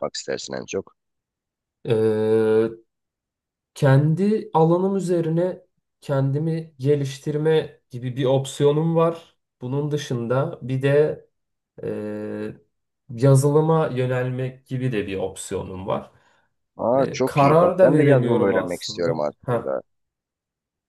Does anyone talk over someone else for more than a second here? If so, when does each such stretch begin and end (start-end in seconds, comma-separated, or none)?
16.9-19.7